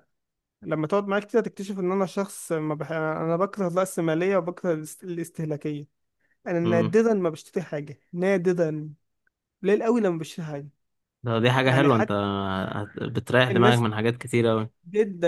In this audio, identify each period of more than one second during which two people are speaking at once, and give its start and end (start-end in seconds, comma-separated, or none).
none